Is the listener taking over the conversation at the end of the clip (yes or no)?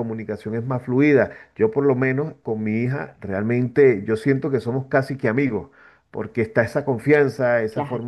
no